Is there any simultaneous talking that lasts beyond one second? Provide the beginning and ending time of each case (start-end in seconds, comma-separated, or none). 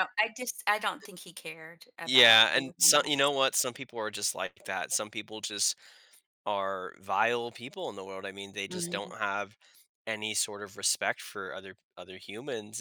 2.0-3.3